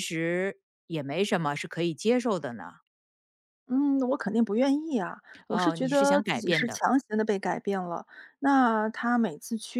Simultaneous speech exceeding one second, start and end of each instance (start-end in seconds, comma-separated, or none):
5.5-6.8